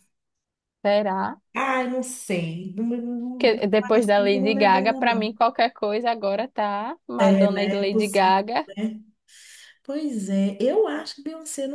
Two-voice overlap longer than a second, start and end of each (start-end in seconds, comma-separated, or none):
3.4-5.3, 7.2-8.7